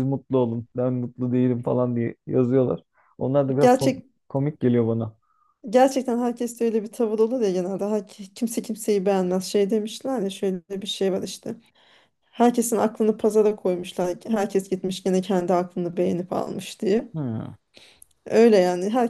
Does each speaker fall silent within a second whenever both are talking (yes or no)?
yes